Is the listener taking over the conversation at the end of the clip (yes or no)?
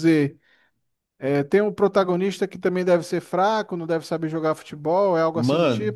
yes